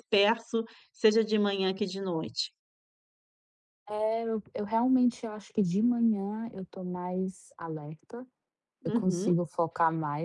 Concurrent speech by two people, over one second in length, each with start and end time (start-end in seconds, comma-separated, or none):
none